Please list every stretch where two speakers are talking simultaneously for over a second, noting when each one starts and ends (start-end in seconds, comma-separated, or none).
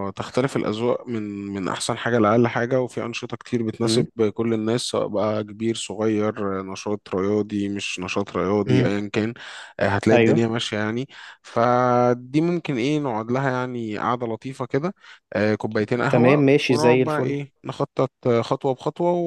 16.1-17.4